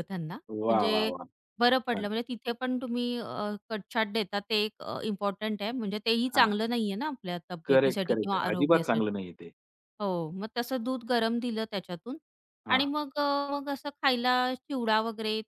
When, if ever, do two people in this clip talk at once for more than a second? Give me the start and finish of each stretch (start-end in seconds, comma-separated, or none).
7.7-9.2